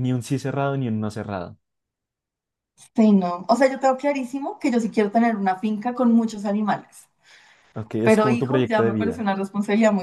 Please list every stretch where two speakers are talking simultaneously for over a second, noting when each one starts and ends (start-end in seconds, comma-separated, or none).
8.0-9.2